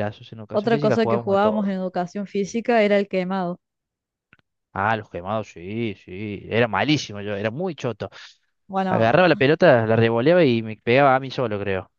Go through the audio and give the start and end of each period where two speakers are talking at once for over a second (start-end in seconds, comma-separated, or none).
0.5-1.7